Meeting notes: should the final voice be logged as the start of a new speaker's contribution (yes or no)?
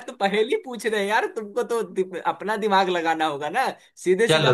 no